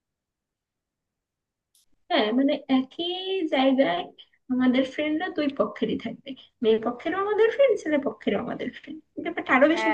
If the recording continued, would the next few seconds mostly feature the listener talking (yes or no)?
yes